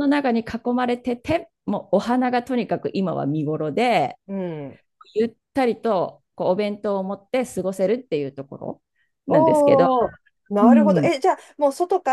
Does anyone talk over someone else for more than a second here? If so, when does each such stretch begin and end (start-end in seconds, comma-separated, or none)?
none